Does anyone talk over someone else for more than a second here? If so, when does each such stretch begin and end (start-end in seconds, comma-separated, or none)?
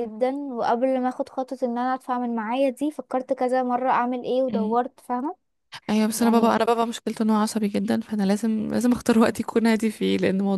none